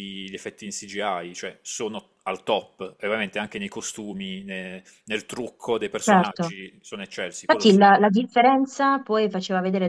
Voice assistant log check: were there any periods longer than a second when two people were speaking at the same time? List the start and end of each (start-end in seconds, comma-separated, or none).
none